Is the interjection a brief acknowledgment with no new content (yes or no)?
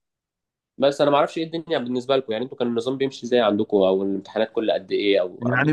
no